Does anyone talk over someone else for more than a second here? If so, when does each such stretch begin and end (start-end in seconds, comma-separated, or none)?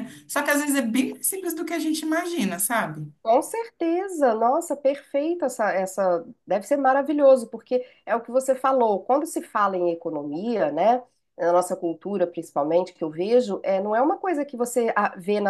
none